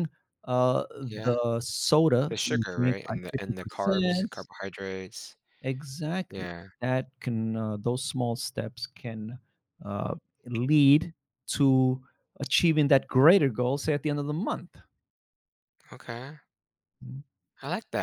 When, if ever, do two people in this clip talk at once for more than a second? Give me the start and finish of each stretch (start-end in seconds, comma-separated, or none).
2.3-4.5